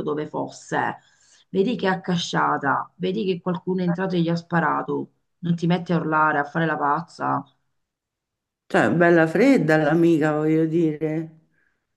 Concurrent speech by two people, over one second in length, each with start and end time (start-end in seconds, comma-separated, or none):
none